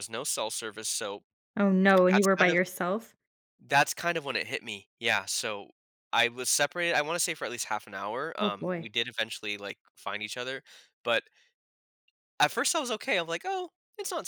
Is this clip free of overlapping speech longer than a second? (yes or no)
yes